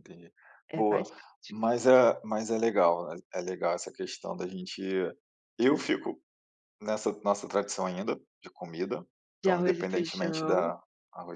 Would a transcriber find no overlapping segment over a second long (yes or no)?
no